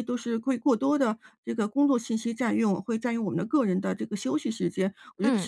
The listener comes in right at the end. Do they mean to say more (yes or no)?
no